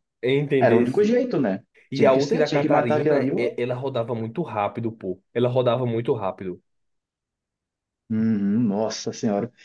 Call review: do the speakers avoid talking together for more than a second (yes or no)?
no